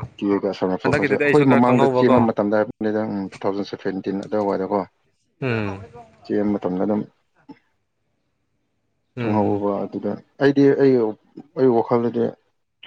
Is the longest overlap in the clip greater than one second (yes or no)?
yes